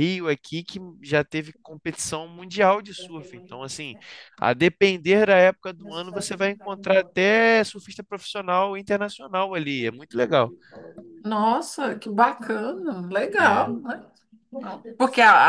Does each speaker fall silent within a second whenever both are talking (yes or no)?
yes